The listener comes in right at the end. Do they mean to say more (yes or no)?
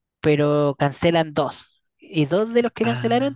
no